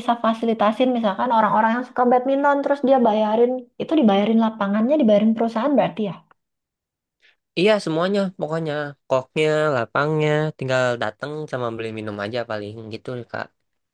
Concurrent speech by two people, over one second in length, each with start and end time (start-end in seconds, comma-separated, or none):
none